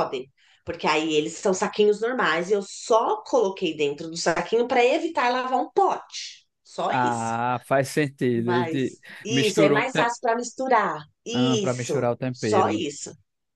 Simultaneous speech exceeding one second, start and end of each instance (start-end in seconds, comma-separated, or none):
8.3-10.1, 11.3-12.8